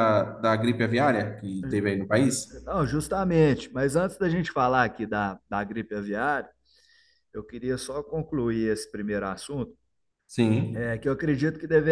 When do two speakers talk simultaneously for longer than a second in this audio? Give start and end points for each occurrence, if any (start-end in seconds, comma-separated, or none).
none